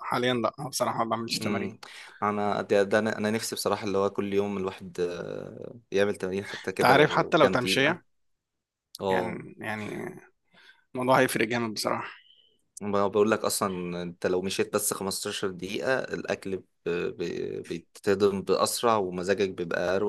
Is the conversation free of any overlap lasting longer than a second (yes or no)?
no